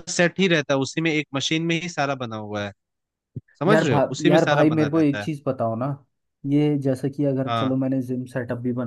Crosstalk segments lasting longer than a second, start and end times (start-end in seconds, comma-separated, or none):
3.7-5.3